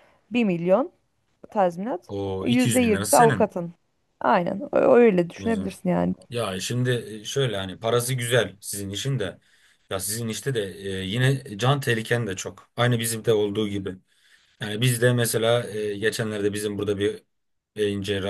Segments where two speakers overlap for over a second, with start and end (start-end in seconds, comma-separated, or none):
2.1-3.6